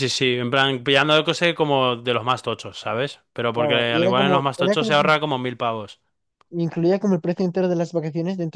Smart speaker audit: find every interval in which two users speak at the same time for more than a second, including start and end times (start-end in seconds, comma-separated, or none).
3.5-4.9